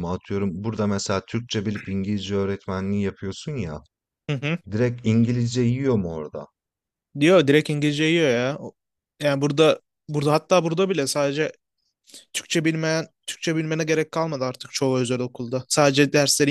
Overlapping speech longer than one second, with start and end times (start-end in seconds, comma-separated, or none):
none